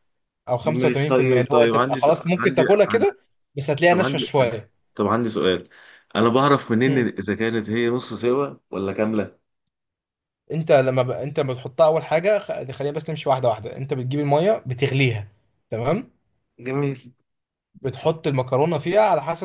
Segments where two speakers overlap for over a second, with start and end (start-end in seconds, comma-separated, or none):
0.6-3.0